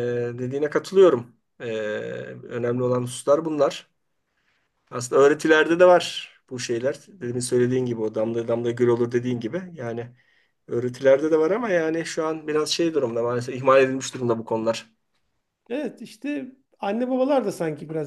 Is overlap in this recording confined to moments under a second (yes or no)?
yes